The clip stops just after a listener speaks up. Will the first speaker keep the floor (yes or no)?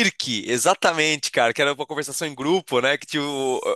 yes